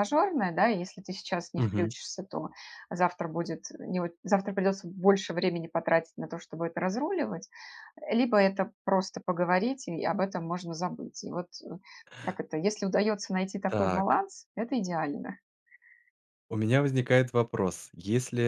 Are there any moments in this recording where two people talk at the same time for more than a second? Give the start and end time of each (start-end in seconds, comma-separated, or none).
none